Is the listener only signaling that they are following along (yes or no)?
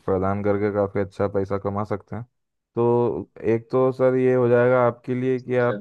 yes